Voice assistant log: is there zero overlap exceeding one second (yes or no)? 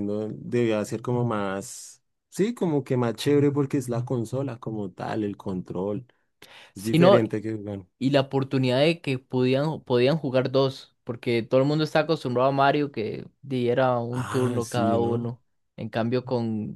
no